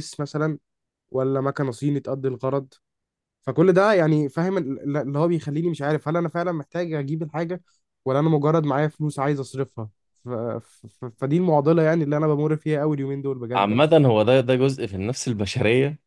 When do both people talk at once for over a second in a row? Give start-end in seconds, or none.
none